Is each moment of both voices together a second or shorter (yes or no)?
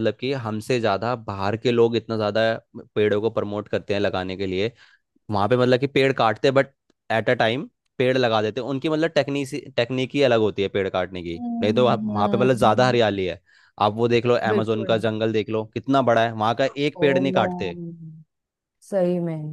no